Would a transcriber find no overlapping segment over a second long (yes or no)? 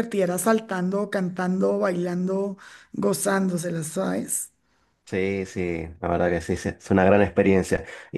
yes